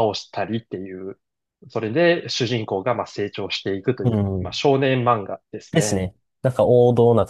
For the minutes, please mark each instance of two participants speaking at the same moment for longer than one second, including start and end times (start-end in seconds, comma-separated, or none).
none